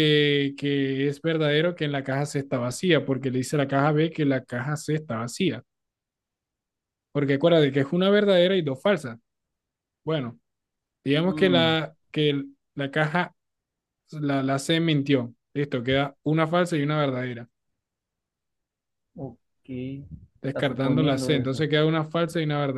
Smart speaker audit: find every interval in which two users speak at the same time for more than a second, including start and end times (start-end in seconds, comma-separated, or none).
20.5-21.7